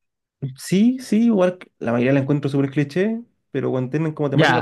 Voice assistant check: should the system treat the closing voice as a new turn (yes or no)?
yes